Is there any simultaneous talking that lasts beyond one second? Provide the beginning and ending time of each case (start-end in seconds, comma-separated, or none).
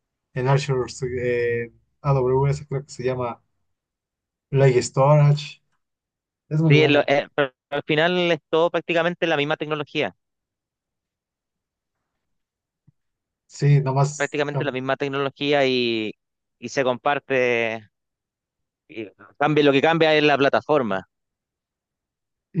none